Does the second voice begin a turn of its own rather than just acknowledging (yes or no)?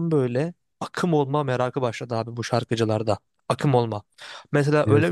no